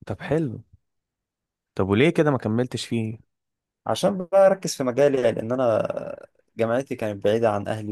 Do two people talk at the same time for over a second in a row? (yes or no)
no